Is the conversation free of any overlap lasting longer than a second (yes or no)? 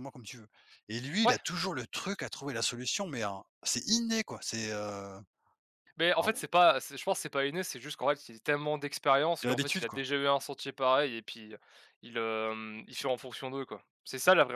yes